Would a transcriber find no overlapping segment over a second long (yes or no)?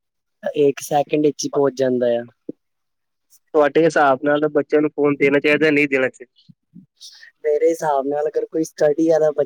yes